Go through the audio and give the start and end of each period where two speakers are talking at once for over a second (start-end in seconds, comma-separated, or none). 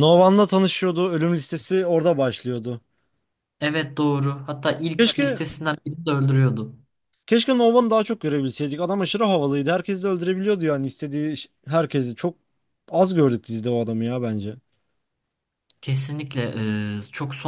none